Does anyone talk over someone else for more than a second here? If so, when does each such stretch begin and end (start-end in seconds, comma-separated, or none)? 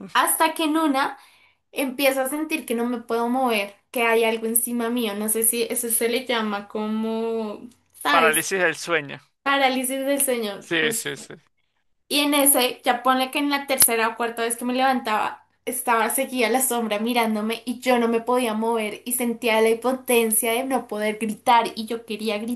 none